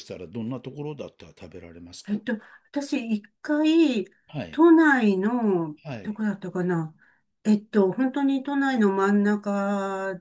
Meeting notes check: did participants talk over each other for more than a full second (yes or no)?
no